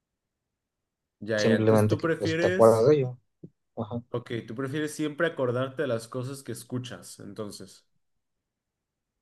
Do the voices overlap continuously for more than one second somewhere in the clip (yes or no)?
yes